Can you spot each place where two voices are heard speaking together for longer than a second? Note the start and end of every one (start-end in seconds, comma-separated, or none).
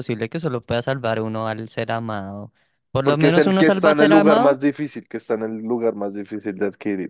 3.0-4.6